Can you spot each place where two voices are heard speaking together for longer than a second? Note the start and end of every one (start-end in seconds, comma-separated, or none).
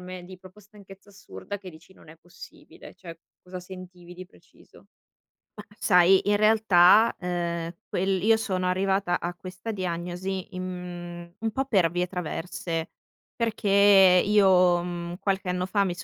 none